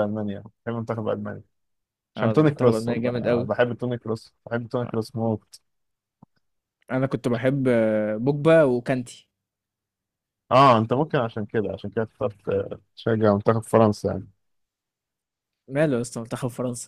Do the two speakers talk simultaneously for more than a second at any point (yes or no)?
yes